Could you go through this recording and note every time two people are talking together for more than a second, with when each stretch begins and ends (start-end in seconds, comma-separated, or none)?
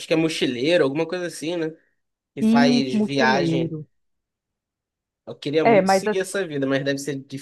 2.4-3.8